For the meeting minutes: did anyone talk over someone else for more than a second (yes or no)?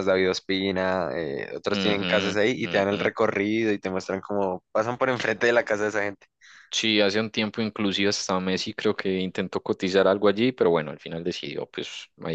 yes